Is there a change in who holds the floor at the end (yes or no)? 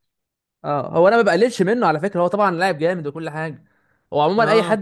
no